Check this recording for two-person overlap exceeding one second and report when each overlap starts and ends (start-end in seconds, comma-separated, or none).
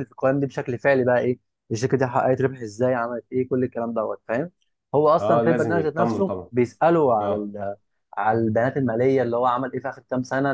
5.2-6.5